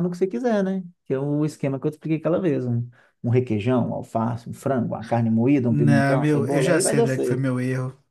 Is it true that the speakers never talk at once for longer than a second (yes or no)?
no